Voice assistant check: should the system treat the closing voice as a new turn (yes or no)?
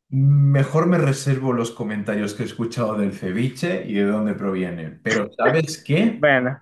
no